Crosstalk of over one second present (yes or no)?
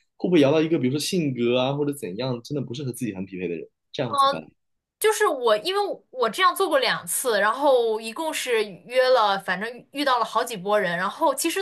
no